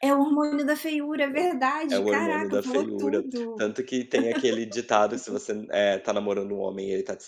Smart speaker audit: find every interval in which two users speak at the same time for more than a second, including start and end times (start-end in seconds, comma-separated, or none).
1.9-3.6